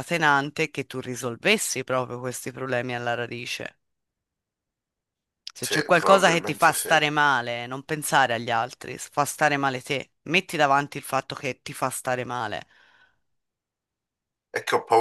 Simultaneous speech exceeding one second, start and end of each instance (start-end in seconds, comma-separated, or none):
5.6-6.9